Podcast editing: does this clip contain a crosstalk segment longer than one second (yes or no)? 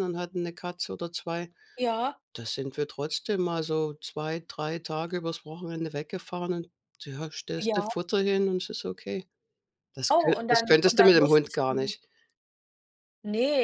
yes